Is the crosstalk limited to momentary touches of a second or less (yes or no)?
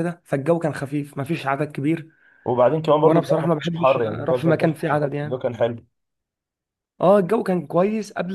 no